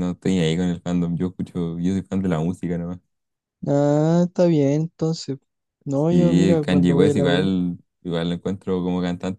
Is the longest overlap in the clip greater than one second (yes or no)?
yes